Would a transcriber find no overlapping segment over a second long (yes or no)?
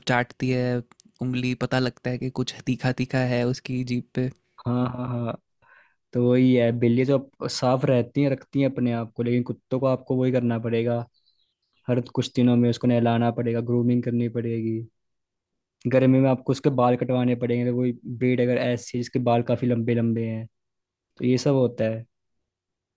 yes